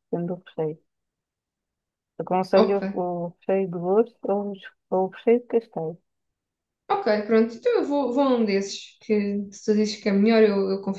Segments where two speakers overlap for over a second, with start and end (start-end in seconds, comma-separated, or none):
none